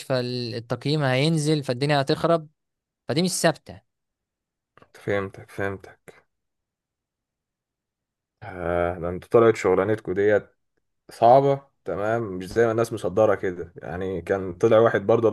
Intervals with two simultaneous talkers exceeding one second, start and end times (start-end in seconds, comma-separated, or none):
none